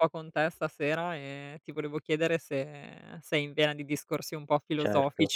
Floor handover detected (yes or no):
yes